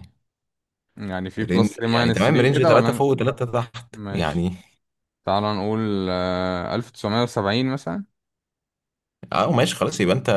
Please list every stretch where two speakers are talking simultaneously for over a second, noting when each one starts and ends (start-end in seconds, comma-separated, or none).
1.4-3.0